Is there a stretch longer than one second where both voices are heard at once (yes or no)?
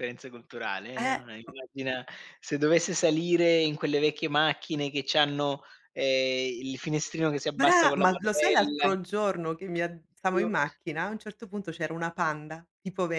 yes